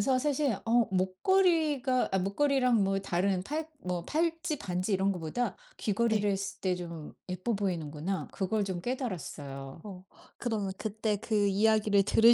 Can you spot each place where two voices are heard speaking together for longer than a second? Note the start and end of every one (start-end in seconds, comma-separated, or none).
none